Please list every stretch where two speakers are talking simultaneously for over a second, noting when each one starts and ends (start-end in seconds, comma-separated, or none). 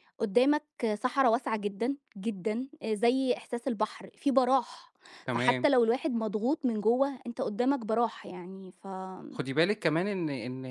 none